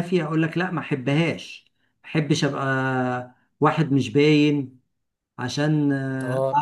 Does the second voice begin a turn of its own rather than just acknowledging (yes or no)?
yes